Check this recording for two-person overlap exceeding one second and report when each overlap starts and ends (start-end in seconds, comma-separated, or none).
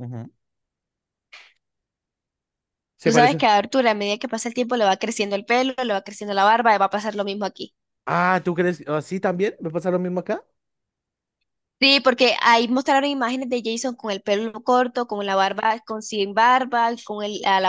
none